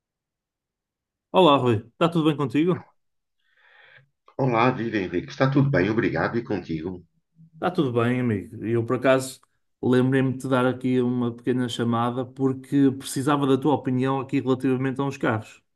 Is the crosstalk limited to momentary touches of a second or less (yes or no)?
yes